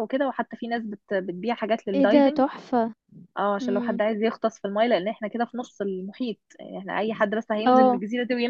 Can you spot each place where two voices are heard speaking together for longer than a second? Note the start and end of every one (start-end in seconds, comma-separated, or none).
none